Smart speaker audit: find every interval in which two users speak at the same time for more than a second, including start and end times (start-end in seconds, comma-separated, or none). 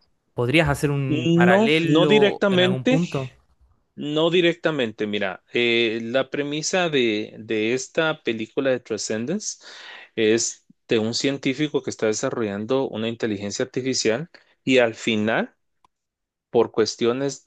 1.1-3.0